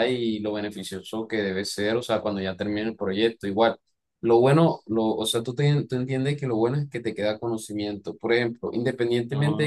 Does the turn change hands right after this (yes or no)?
no